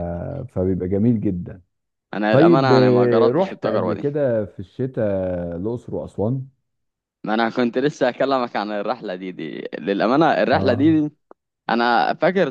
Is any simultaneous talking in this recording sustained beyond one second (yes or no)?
yes